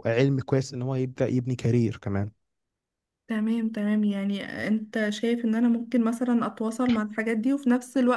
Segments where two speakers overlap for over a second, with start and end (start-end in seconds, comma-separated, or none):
none